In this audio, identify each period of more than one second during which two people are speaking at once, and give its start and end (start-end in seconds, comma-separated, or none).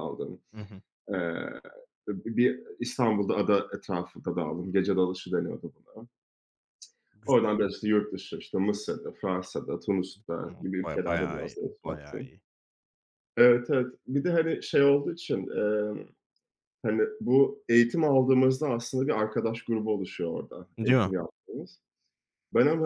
10.5-12.3